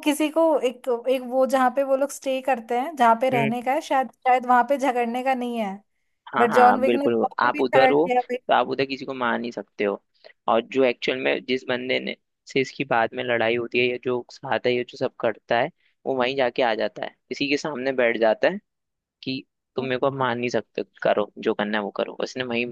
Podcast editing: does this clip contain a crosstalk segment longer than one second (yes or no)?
yes